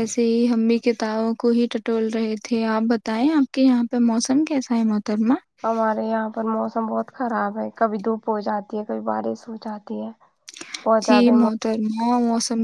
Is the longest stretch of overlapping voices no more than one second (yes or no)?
yes